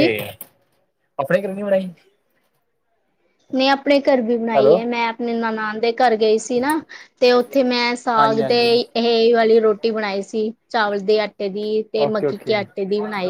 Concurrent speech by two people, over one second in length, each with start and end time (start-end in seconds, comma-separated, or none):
none